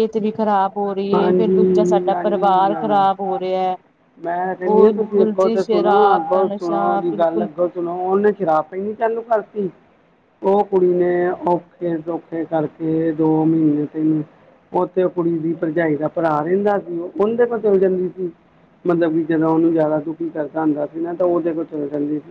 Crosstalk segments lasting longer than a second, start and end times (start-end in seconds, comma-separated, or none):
1.1-3.0, 4.7-7.5